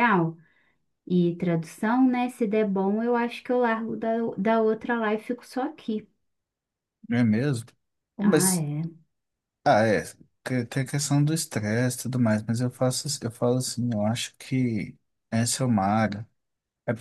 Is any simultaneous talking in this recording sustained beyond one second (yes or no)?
no